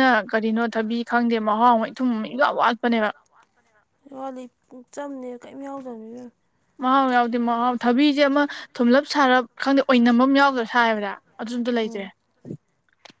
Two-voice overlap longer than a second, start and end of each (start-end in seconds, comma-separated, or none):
7.8-12.1